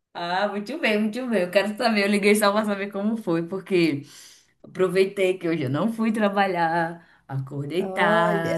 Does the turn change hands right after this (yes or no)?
no